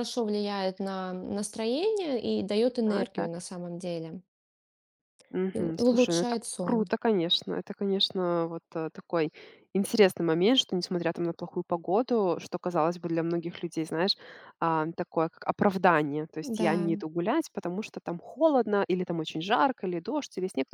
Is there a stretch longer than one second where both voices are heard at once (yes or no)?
yes